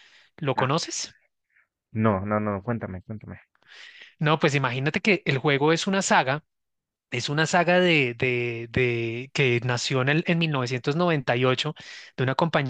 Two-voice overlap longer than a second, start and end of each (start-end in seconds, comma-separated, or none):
none